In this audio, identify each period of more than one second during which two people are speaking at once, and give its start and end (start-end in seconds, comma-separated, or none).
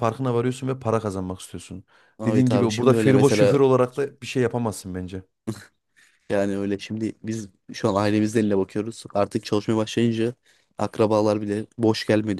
2.2-3.6